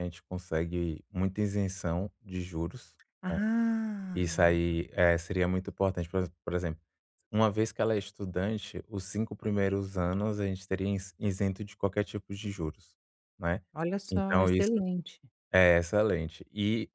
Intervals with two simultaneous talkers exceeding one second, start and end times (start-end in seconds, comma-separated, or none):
none